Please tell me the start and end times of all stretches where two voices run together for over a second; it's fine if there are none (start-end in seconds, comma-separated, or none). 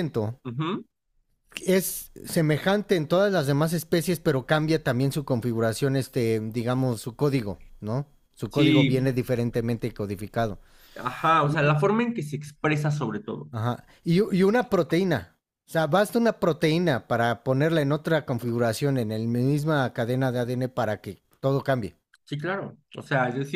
none